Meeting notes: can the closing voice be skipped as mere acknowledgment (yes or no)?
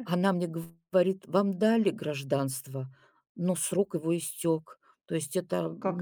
yes